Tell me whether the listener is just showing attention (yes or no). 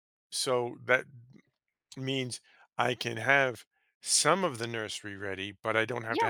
no